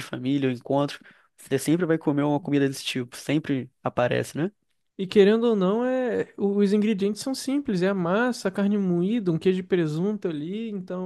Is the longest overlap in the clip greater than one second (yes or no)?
no